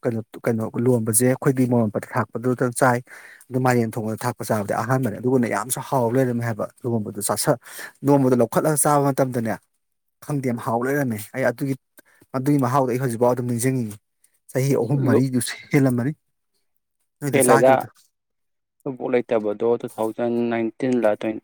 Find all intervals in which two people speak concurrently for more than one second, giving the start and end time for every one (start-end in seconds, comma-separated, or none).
none